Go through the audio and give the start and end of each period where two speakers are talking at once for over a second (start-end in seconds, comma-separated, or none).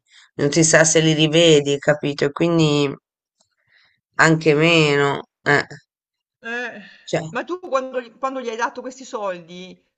none